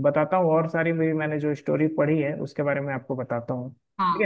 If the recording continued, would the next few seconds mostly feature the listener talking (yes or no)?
yes